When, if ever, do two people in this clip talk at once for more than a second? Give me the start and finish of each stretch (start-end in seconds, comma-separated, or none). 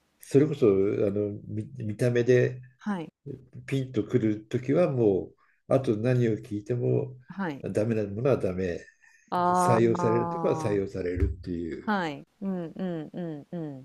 9.6-10.8